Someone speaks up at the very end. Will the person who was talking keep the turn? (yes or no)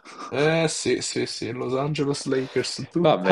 no